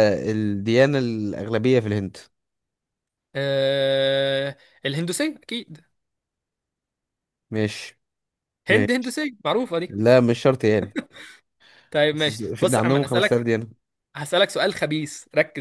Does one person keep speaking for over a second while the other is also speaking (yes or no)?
yes